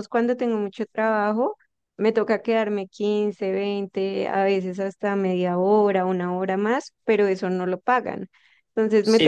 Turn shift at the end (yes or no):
yes